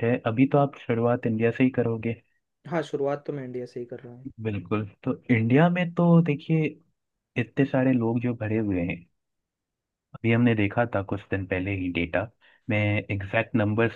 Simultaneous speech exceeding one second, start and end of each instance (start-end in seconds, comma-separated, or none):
none